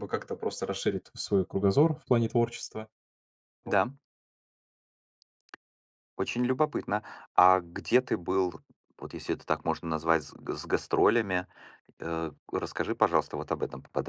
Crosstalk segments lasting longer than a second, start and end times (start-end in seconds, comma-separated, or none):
none